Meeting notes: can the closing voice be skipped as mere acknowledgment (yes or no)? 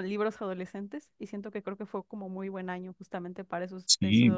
no